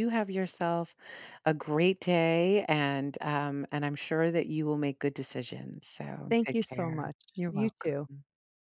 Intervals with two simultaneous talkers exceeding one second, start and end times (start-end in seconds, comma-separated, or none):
6.3-8.1